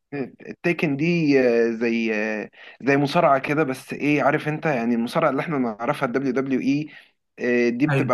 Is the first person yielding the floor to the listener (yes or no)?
no